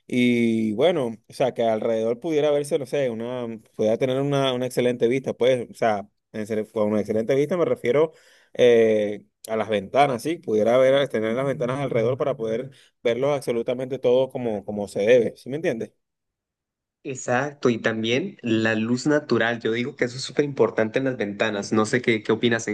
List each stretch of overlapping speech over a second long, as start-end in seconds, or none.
none